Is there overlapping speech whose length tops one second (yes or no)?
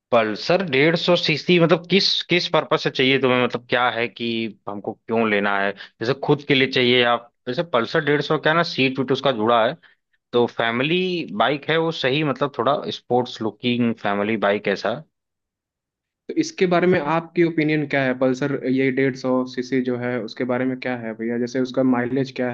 no